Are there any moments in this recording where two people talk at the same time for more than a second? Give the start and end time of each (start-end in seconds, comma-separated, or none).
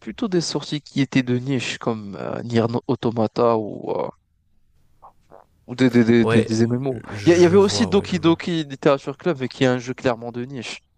7.1-8.4